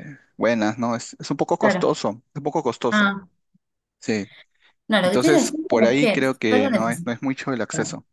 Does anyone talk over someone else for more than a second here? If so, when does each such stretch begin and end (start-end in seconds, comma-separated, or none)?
5.0-7.2